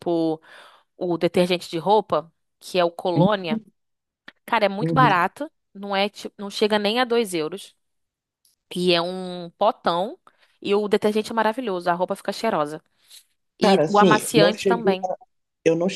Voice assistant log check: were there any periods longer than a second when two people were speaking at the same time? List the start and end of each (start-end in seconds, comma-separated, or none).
13.6-15.0